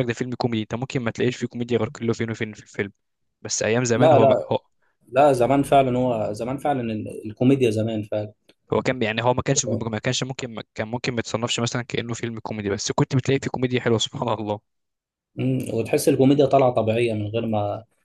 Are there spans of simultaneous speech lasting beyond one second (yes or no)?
no